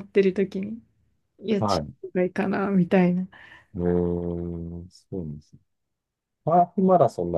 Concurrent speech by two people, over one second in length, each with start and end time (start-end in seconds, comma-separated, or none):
none